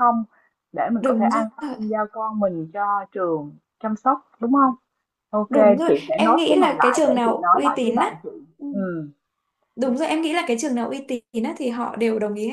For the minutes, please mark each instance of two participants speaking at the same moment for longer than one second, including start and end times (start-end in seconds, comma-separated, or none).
5.5-8.2